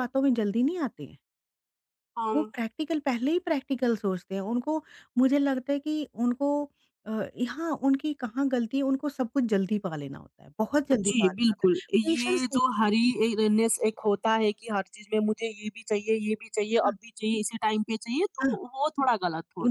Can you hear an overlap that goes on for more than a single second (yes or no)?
yes